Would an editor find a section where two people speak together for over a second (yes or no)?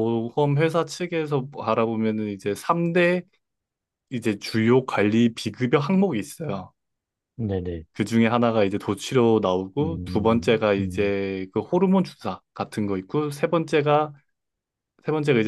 yes